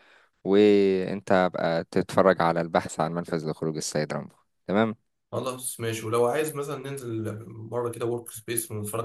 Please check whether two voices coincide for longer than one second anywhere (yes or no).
no